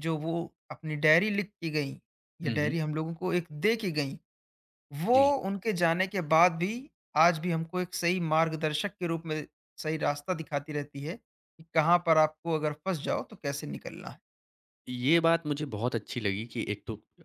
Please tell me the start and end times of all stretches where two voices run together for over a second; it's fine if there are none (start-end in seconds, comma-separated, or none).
none